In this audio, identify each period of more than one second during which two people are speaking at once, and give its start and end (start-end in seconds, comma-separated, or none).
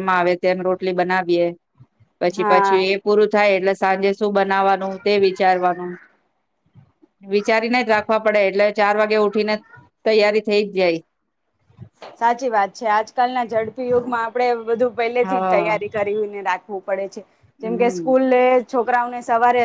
none